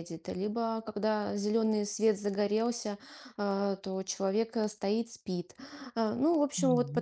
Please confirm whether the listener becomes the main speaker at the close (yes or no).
no